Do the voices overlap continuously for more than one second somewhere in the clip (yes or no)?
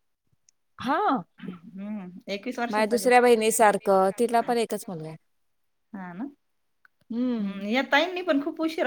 yes